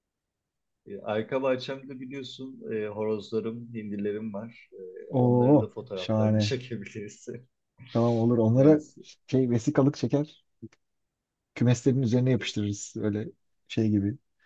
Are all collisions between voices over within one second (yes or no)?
no